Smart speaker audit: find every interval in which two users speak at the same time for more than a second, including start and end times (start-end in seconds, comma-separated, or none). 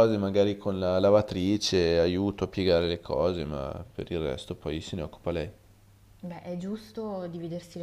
none